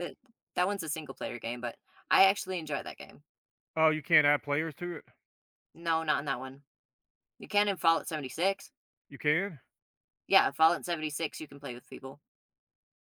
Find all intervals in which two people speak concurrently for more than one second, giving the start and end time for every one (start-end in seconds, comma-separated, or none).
none